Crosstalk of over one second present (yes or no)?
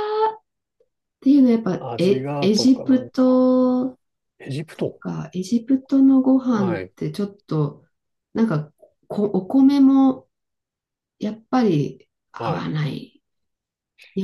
yes